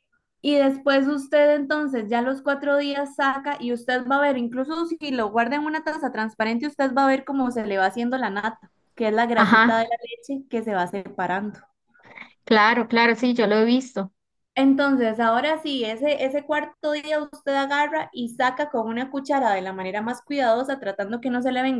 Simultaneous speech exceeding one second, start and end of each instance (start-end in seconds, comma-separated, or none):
none